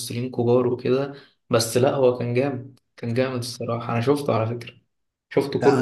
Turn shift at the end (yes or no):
yes